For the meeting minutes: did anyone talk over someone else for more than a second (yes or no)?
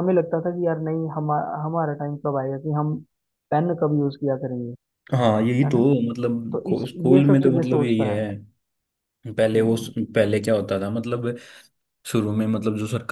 yes